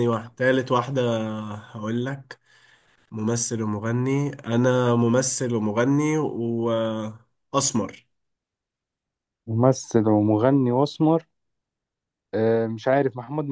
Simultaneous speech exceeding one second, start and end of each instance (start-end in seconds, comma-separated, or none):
none